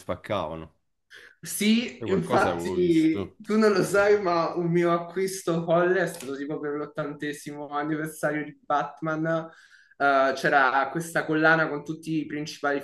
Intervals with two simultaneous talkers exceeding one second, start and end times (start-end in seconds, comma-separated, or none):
1.9-3.4